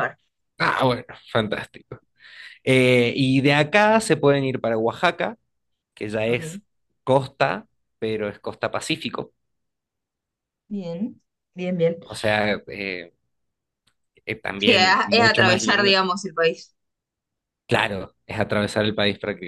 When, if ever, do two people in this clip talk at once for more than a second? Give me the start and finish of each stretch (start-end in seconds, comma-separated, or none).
14.6-15.9